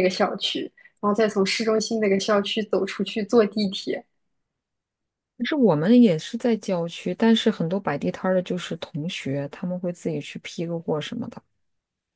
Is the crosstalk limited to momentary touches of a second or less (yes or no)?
yes